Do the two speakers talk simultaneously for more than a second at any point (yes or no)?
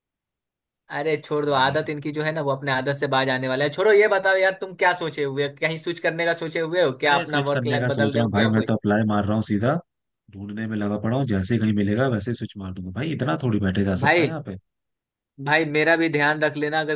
yes